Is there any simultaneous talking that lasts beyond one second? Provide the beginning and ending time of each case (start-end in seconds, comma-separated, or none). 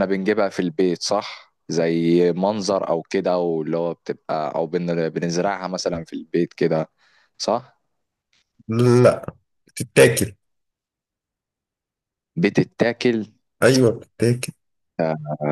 none